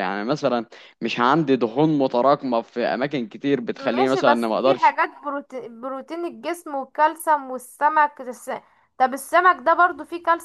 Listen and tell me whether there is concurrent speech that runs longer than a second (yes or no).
yes